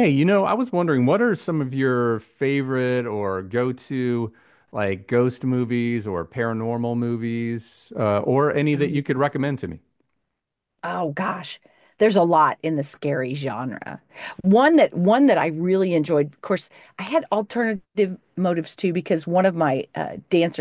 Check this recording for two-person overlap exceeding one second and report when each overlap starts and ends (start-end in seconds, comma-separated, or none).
none